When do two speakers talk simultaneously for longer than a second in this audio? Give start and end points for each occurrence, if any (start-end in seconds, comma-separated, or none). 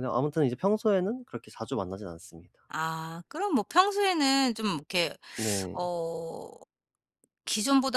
none